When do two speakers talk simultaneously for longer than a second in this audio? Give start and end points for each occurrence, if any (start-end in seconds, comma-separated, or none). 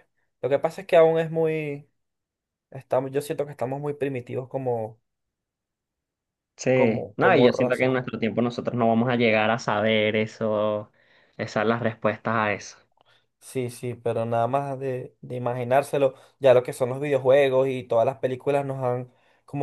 6.7-7.9